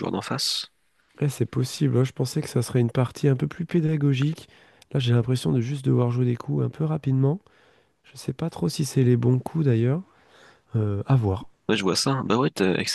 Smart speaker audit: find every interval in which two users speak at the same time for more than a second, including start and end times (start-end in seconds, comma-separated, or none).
none